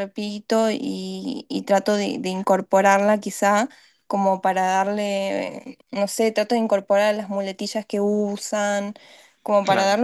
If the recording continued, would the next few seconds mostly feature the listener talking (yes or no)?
no